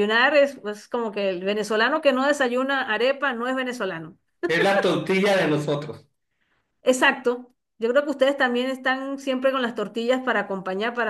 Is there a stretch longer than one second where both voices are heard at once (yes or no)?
no